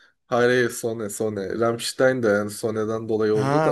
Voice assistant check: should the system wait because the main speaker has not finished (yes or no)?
no